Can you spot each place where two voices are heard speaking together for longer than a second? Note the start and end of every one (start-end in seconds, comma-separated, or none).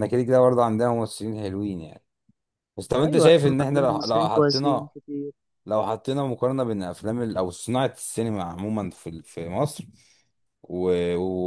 3.0-4.9